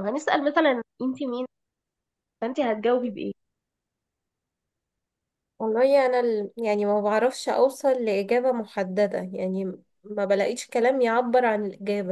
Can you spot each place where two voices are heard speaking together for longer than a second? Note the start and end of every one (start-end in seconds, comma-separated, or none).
none